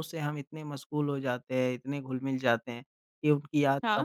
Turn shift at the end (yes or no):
no